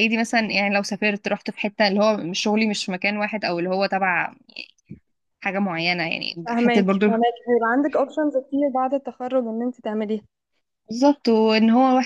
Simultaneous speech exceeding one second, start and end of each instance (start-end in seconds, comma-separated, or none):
none